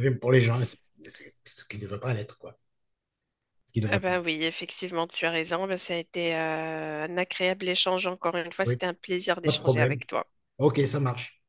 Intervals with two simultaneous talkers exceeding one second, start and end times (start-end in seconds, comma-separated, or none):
none